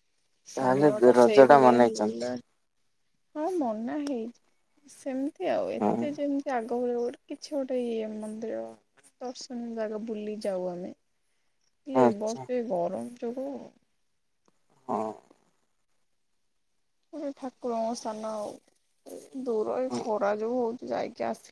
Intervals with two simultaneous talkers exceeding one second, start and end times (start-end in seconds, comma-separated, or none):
0.6-2.3